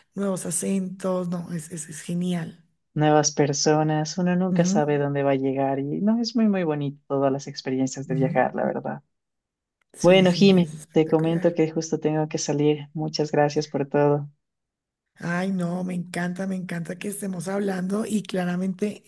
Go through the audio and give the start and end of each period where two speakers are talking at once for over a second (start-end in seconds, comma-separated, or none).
10.0-11.6